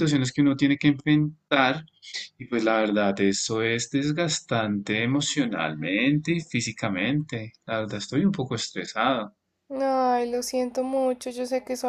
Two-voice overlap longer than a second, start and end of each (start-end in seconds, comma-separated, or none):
none